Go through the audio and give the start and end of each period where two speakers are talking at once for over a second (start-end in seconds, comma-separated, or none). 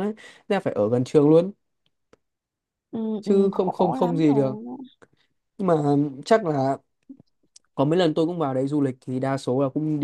3.2-4.5